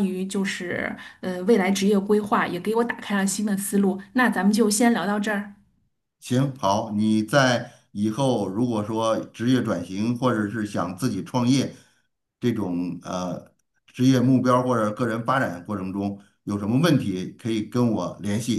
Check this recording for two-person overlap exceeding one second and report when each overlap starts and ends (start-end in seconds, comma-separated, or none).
none